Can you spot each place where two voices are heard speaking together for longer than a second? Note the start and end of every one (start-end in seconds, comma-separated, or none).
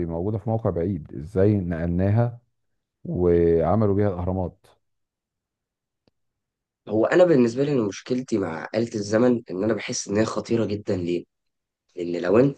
none